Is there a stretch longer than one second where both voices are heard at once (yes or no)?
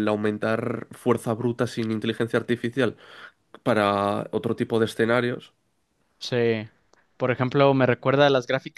no